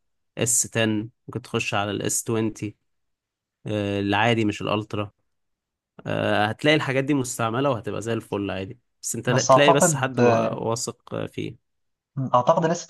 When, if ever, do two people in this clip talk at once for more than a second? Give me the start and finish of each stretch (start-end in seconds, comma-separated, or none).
9.2-10.6